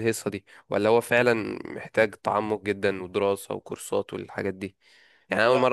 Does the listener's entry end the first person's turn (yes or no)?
no